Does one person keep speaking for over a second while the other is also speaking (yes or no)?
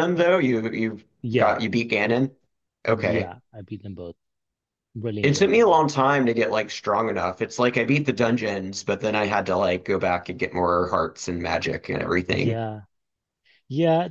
no